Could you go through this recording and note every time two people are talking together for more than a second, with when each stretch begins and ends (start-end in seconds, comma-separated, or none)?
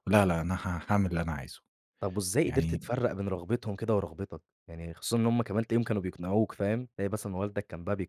none